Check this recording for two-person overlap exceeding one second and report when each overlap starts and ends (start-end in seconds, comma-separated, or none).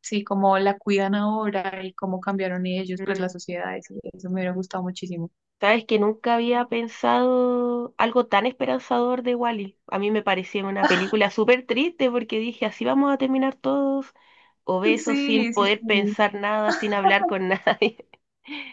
15.0-16.2